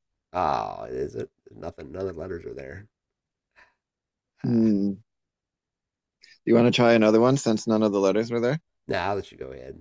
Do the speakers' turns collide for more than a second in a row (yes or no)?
no